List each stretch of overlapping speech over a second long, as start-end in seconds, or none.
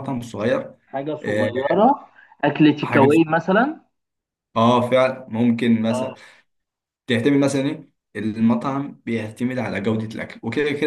none